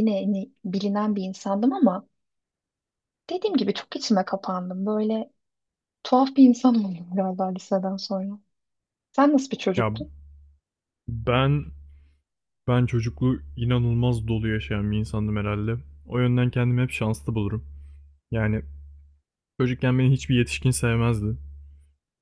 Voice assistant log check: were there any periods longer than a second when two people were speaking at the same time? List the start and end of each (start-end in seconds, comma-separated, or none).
none